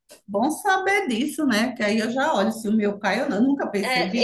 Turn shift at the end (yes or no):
yes